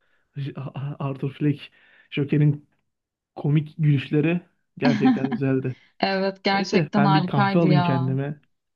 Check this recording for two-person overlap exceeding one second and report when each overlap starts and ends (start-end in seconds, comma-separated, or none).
6.5-8.2